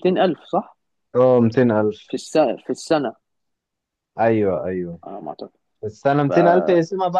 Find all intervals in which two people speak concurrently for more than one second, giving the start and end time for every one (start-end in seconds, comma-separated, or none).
none